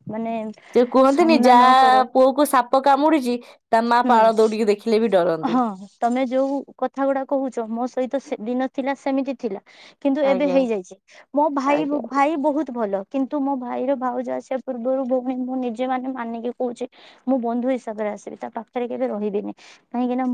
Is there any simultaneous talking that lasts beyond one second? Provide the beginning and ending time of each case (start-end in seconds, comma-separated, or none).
none